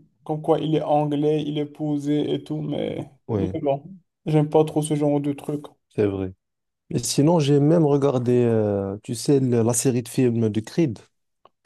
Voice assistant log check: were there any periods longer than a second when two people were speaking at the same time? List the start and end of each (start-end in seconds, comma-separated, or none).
none